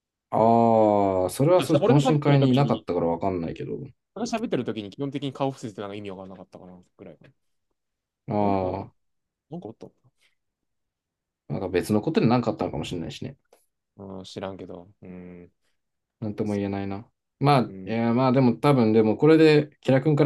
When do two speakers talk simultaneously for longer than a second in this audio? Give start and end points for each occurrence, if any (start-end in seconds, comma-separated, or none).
1.6-2.8